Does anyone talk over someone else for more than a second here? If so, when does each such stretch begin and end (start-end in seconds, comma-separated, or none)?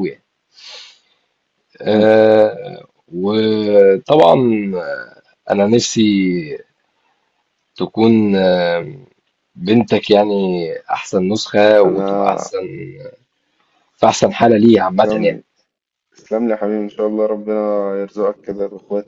none